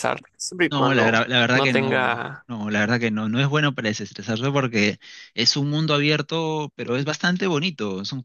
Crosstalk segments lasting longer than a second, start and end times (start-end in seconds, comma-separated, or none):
0.7-2.0